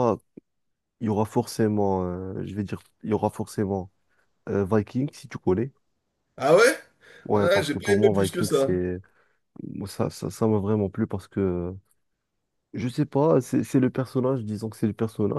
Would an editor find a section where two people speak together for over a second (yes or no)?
yes